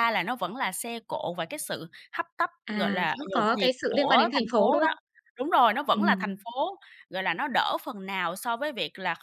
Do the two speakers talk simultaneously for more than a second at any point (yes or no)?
yes